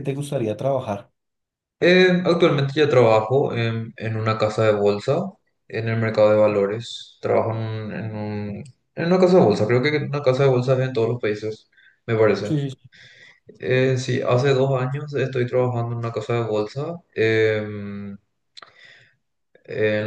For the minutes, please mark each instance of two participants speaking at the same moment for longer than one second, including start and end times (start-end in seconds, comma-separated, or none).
none